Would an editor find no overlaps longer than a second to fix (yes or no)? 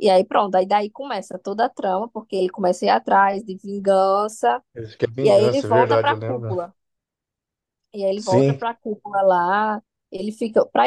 no